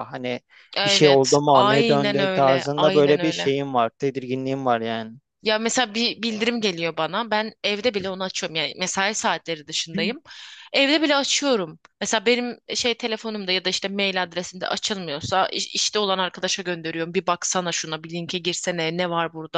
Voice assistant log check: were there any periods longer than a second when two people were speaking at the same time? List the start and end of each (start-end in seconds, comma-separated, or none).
0.8-3.5